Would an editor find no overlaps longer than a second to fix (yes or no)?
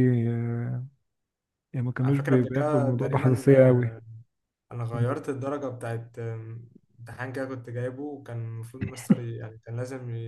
no